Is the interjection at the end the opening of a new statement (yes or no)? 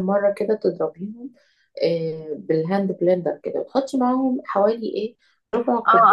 yes